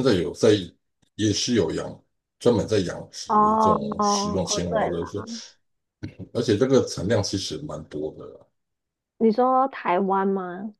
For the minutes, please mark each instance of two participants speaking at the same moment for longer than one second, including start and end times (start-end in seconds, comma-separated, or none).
3.3-5.0